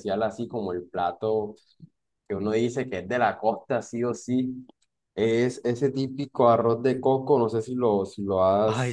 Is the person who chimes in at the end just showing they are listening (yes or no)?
yes